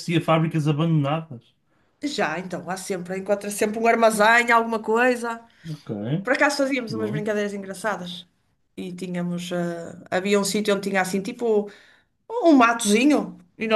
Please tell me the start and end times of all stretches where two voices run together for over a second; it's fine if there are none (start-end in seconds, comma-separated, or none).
none